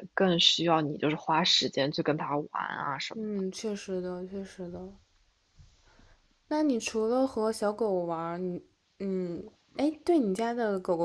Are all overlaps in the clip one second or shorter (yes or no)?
yes